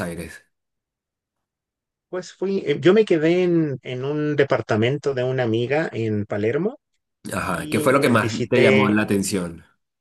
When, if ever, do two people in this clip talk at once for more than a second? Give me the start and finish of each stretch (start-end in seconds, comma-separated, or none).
7.3-9.0